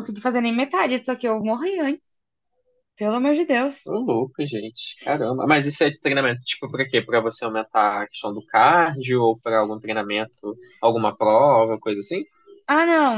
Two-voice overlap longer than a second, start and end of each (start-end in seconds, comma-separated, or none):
none